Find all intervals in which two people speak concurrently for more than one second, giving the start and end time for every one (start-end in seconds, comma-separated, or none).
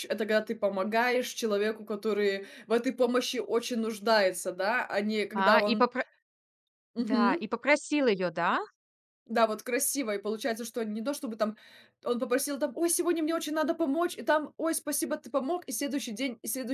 none